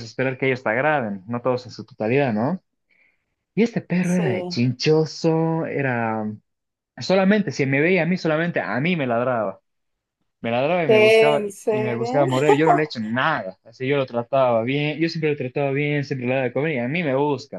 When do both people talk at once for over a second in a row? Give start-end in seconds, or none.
10.8-12.2